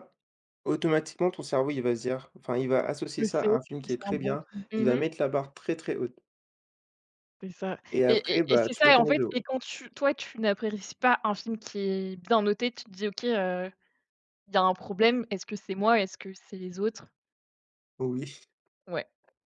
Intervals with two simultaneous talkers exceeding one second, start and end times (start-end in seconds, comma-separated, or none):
3.2-5.0, 7.9-9.4